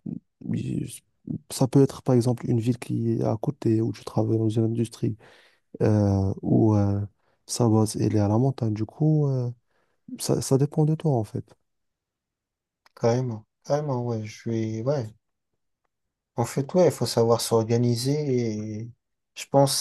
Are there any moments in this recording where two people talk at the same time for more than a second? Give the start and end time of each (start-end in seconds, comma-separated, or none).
none